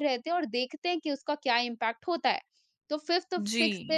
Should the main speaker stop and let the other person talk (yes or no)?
no